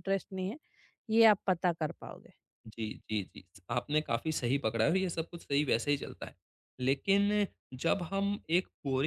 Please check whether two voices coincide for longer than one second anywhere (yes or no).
no